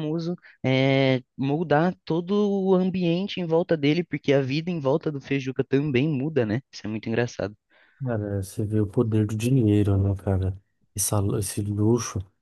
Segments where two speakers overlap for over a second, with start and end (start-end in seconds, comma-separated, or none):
none